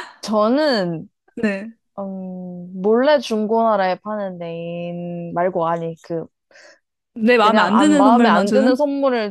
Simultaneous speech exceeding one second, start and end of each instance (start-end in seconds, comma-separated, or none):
7.4-8.8